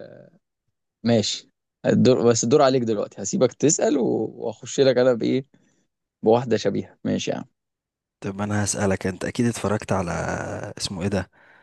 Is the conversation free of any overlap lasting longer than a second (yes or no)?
yes